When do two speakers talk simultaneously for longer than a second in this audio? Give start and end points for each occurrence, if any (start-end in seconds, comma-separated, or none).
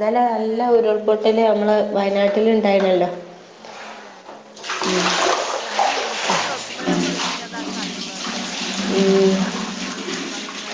none